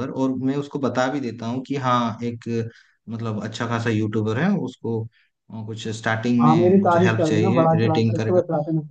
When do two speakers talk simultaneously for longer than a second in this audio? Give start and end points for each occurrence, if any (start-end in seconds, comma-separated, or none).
6.4-8.4